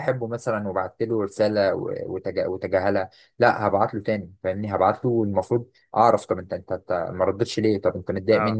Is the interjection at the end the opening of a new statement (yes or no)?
no